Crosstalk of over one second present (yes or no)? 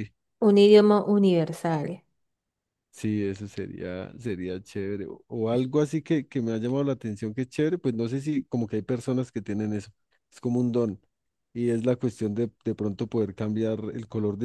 no